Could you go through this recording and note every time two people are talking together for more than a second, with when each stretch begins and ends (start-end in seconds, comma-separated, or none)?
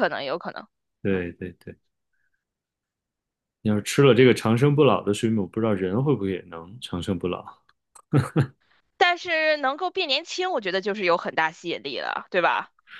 none